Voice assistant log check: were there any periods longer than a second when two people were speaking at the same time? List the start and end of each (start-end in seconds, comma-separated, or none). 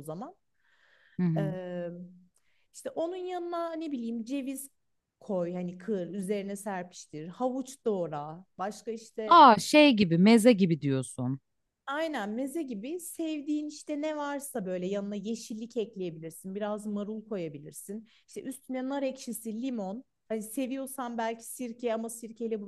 none